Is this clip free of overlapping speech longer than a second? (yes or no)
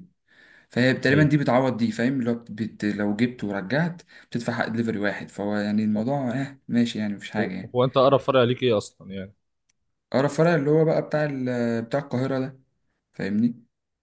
yes